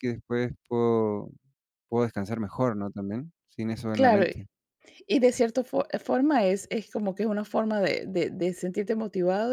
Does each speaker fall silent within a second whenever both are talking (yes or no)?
yes